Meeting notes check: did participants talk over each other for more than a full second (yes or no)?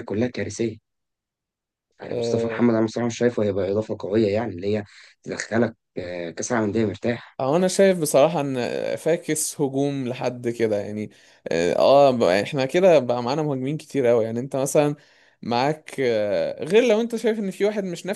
no